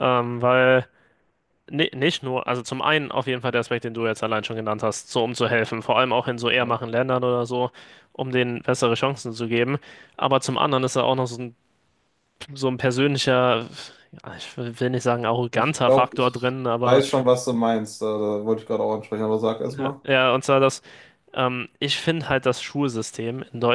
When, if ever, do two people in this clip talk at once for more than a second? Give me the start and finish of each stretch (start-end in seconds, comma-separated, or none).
15.5-17.0